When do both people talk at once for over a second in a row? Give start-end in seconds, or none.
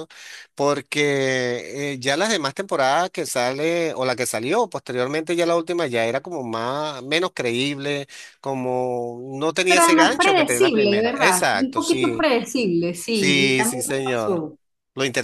9.7-12.3, 13.1-14.4